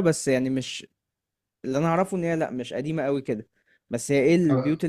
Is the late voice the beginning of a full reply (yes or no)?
no